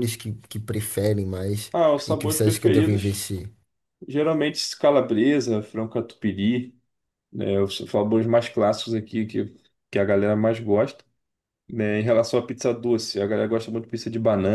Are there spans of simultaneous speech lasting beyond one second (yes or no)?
yes